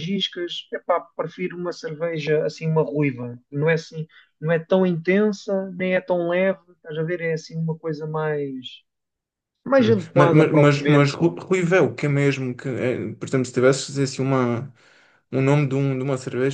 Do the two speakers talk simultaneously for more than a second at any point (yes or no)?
yes